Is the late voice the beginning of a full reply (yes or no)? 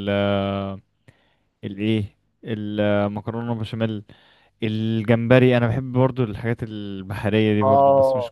yes